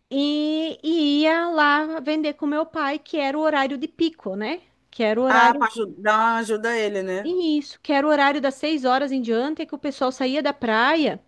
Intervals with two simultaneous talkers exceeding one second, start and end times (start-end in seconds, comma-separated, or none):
none